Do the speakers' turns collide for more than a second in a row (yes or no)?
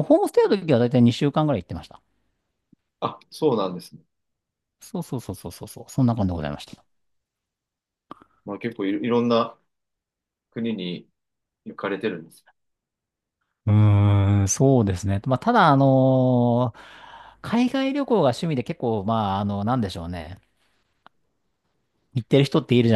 no